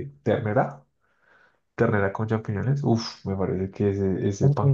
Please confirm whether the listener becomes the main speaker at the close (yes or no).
no